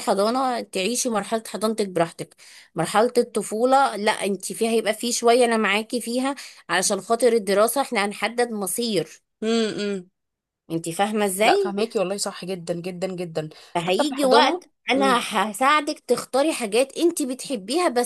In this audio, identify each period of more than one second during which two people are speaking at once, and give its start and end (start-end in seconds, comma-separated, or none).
13.9-15.2